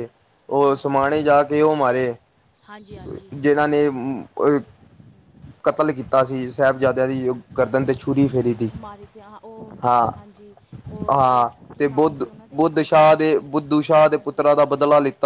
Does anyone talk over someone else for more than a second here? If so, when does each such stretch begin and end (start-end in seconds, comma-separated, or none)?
11.1-13.1